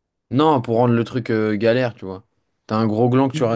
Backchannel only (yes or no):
yes